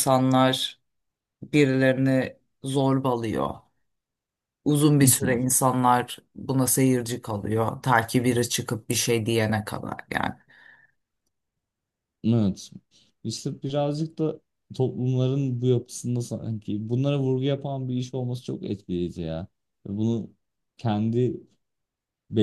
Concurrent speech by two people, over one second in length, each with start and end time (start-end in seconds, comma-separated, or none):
none